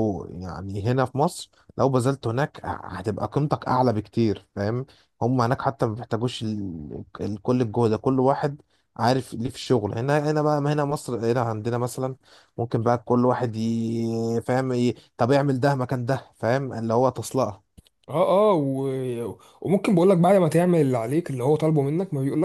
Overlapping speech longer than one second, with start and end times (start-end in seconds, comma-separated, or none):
none